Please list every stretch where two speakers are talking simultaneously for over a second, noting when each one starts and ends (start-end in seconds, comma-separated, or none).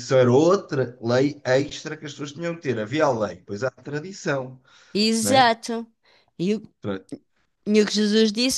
none